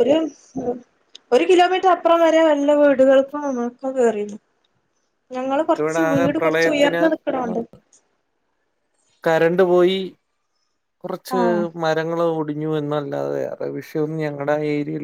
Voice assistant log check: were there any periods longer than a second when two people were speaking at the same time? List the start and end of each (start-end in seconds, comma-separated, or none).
5.5-7.0